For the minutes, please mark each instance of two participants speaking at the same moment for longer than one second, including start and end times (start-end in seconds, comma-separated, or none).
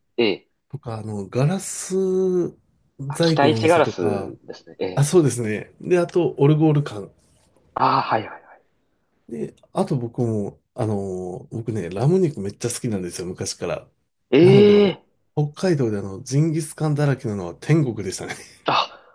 3.1-4.3